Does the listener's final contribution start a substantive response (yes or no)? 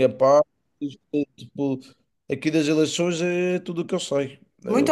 yes